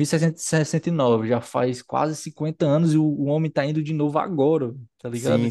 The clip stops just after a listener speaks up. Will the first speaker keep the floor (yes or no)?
no